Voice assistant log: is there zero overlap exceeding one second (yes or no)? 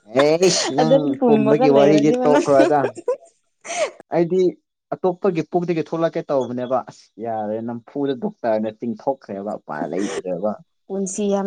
no